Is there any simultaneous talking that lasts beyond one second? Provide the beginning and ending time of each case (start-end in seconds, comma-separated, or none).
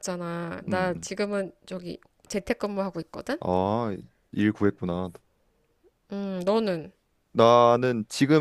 none